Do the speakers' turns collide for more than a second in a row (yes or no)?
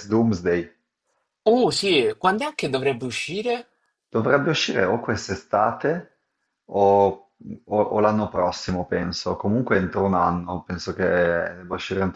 no